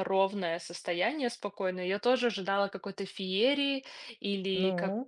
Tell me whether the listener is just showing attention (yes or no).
yes